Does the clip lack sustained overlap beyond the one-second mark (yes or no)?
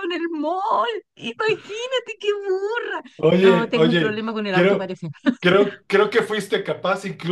no